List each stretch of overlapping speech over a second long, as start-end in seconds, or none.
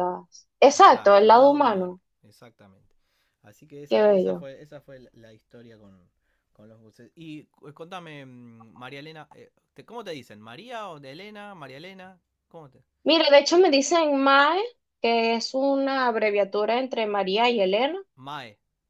0.7-2.0